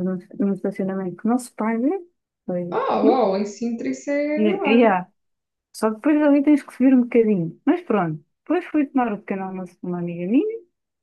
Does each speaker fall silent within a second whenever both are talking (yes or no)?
yes